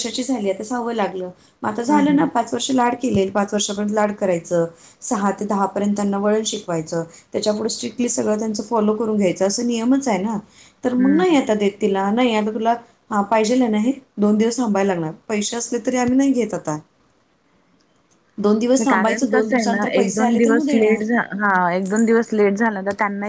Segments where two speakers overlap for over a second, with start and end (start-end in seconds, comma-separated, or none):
18.9-21.0